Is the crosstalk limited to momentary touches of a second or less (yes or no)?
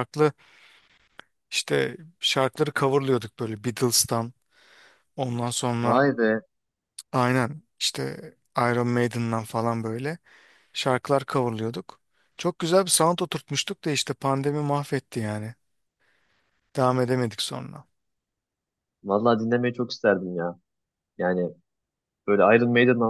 yes